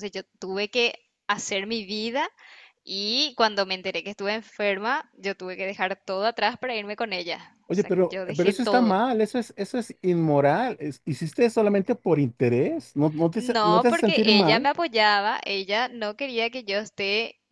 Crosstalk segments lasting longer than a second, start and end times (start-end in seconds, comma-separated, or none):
7.7-9.0, 13.3-14.7